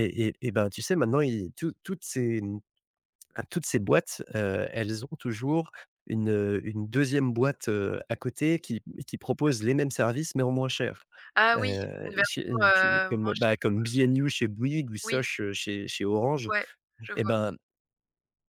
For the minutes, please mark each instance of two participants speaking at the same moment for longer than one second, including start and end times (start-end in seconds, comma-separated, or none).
11.6-13.7